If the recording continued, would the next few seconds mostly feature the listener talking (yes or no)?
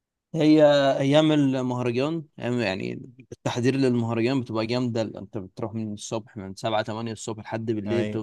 no